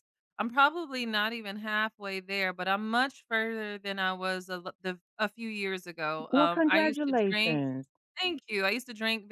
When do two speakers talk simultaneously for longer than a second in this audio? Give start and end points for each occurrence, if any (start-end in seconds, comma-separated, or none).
6.3-7.6